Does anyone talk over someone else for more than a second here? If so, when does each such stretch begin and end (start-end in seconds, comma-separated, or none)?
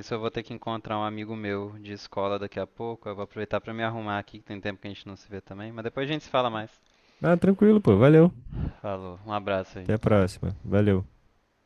none